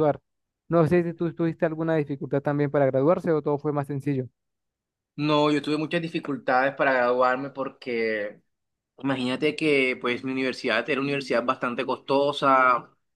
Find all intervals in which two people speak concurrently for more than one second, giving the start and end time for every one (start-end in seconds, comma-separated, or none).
none